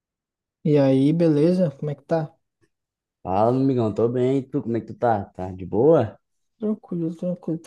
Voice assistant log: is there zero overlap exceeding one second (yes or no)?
yes